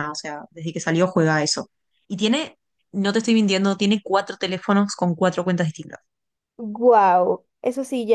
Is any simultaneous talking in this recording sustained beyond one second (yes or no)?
no